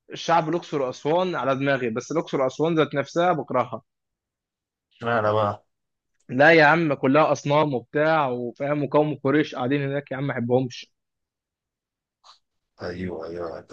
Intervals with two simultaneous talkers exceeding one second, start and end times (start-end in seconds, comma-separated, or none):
none